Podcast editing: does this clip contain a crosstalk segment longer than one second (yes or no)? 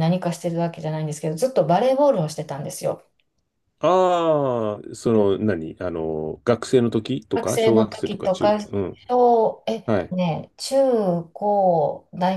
yes